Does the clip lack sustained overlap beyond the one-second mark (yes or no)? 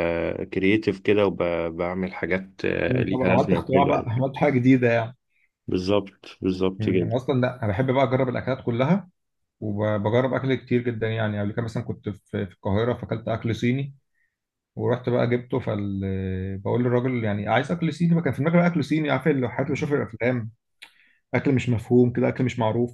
no